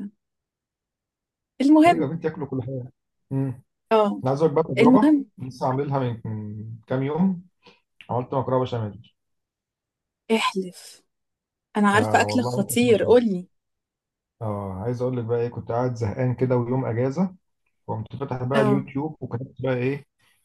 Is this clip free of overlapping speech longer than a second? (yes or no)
no